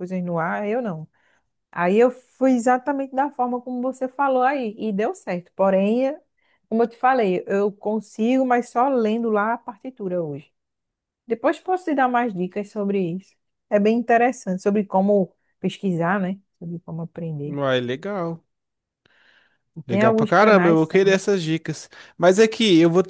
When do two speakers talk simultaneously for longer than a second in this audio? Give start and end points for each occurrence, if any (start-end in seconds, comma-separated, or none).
19.9-21.2